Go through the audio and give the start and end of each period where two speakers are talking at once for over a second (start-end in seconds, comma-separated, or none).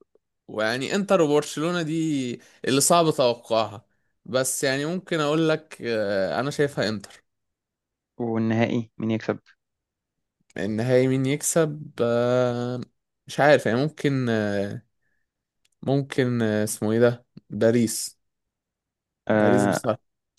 none